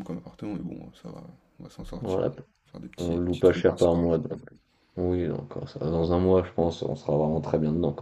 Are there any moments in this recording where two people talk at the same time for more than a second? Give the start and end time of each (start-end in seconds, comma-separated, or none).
3.0-4.4